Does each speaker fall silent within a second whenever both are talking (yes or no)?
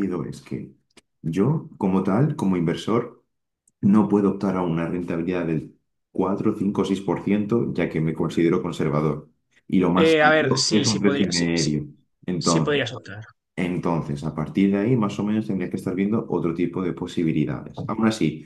no